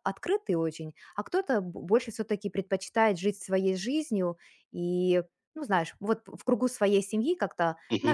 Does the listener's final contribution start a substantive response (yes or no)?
no